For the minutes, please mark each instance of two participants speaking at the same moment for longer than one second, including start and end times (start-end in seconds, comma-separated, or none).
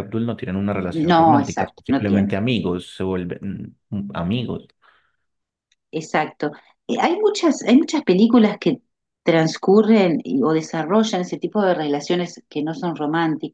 0.9-2.4